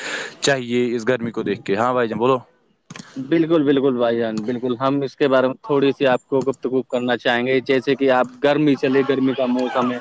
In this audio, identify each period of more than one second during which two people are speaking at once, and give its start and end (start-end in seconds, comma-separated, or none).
none